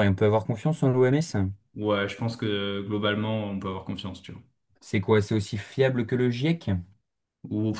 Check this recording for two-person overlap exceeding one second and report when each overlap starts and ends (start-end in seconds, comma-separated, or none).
none